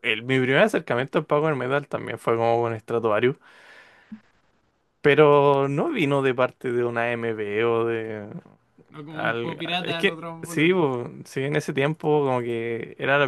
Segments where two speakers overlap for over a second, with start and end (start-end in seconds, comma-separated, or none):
9.1-10.8